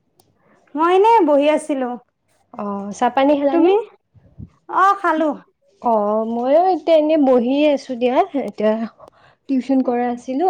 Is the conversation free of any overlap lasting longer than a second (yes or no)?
yes